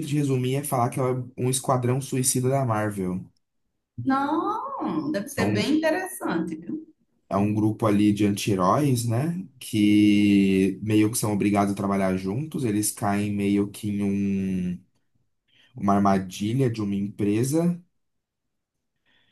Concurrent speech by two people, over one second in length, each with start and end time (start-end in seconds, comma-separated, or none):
none